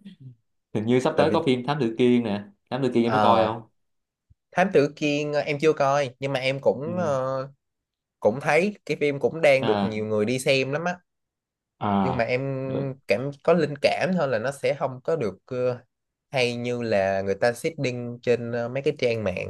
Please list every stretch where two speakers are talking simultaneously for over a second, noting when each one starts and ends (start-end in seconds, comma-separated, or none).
none